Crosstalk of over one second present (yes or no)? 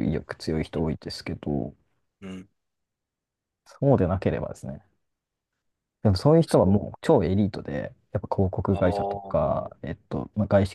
yes